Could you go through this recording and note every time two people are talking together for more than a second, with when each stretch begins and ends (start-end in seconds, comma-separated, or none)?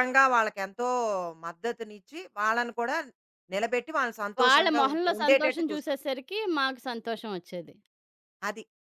4.4-6.0